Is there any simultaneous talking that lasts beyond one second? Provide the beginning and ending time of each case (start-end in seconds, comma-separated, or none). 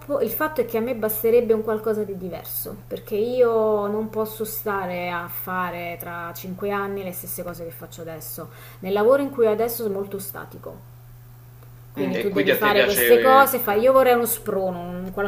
12.0-13.9